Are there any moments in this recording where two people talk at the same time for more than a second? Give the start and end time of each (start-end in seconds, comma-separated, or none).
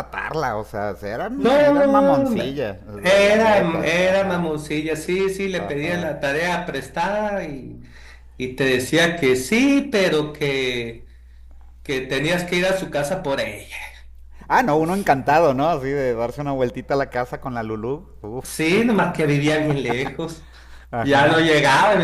1.4-4.5